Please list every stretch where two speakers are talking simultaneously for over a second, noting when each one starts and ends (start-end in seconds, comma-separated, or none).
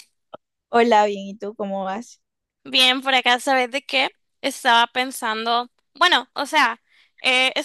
none